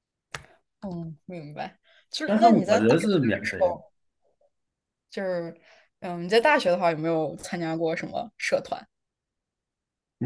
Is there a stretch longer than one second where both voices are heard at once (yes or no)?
yes